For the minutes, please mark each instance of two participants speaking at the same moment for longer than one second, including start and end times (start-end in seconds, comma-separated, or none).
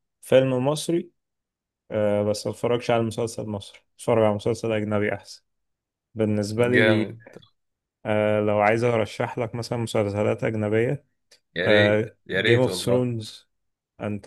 11.6-13.1